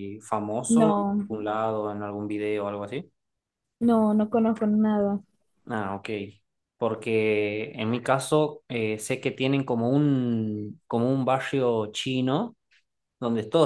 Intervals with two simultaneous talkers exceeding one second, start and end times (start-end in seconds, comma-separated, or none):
none